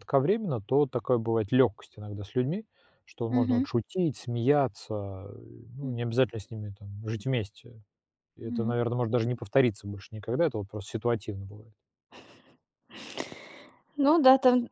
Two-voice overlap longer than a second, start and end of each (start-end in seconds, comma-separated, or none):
none